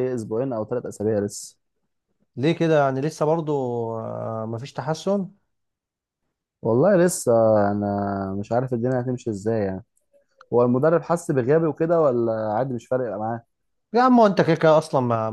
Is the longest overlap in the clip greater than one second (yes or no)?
no